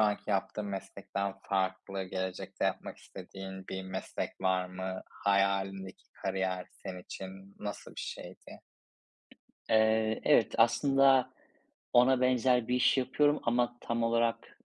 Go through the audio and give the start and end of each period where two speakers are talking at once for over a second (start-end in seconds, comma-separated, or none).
none